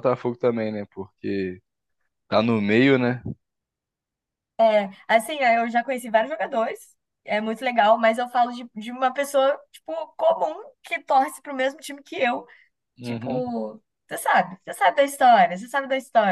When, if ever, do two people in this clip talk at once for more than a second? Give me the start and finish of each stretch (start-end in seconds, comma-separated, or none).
none